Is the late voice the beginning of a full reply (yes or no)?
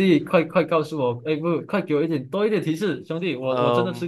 yes